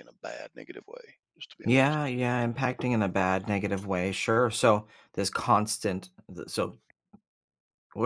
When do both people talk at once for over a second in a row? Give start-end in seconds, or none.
none